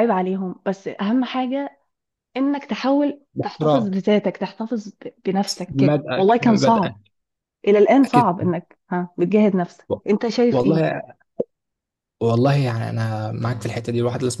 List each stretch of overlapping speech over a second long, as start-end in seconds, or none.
5.7-7.0